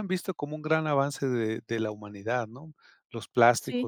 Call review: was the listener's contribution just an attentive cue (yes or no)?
yes